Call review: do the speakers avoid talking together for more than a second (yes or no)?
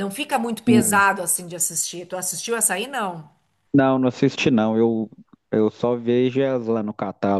yes